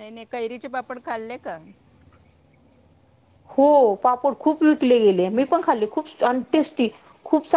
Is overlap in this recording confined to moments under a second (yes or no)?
yes